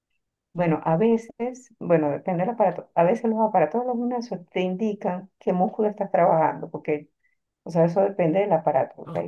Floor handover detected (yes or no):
no